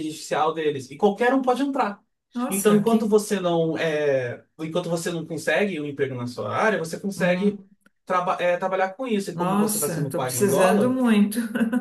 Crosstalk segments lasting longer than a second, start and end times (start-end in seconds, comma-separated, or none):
9.3-10.9